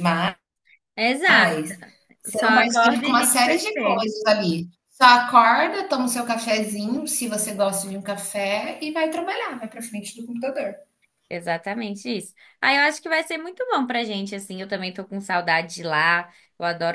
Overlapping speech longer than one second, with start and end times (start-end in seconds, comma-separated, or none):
2.3-4.1